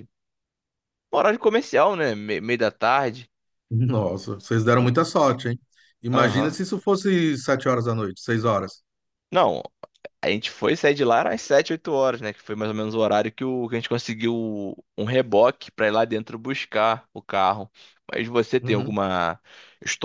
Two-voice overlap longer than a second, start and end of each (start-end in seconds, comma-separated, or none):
none